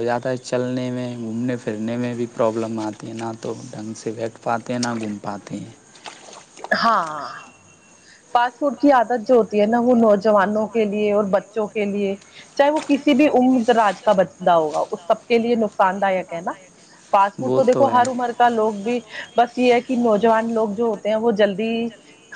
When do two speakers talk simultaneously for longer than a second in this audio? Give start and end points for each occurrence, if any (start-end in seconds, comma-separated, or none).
none